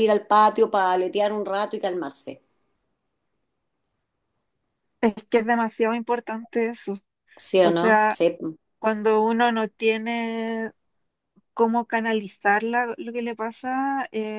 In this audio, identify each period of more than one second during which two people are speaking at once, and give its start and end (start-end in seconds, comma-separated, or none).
none